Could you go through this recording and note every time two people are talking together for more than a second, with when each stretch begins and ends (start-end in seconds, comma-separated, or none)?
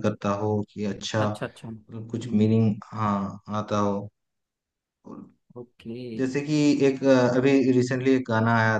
1.2-2.5